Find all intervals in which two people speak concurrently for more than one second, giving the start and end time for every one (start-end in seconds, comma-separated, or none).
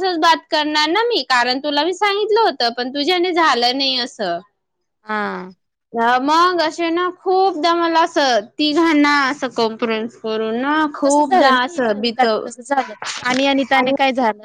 11.1-12.7